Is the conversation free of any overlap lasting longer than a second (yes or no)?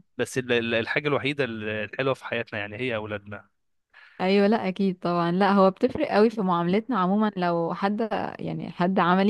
yes